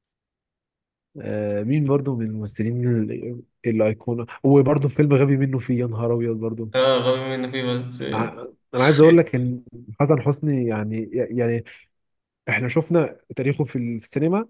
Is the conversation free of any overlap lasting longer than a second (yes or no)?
yes